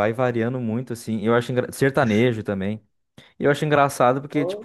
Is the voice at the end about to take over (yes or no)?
no